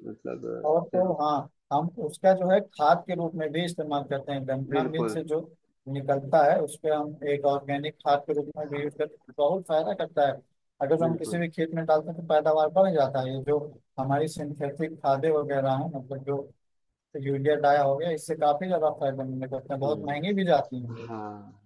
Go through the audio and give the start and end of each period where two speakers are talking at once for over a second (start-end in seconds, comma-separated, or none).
none